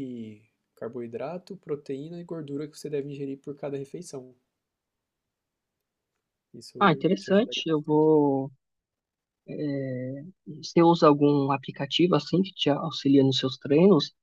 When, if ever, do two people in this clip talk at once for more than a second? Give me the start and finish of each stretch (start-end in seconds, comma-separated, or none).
6.8-8.1